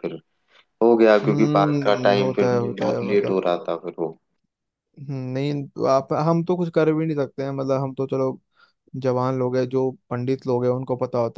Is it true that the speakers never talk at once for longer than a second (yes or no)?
no